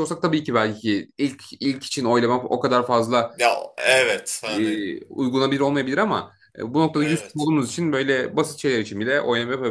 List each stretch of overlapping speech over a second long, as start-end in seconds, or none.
none